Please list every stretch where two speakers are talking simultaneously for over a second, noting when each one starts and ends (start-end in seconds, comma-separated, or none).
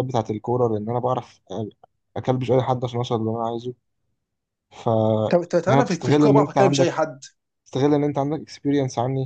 5.7-6.9